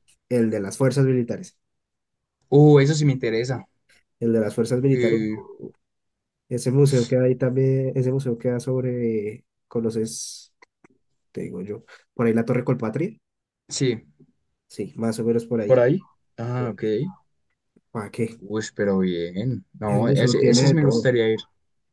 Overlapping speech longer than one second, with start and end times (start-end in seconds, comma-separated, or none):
19.9-21.1